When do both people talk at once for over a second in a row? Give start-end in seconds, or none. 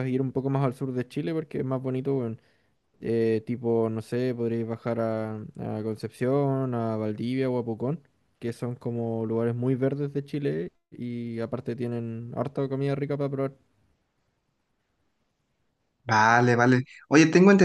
none